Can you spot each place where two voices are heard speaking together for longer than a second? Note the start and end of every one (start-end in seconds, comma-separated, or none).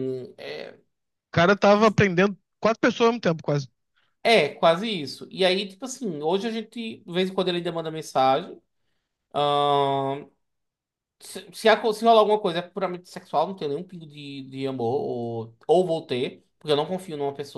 none